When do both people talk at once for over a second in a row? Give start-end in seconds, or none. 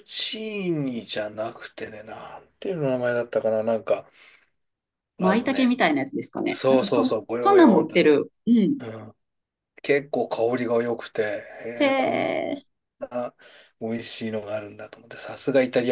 6.5-8.0